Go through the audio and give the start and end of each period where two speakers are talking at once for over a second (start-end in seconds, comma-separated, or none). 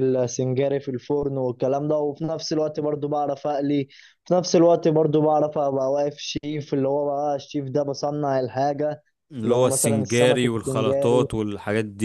9.4-11.3